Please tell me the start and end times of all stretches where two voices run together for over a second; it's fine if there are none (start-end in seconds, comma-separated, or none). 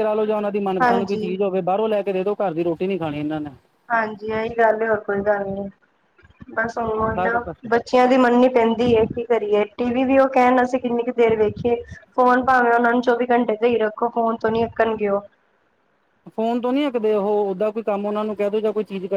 none